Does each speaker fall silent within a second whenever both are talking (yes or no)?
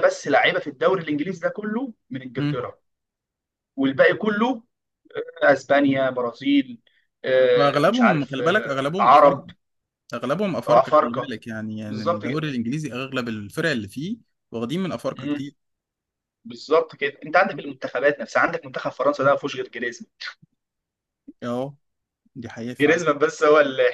no